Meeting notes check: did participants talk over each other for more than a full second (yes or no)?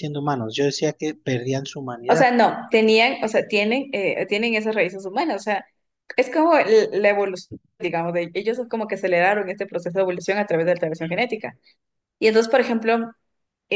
no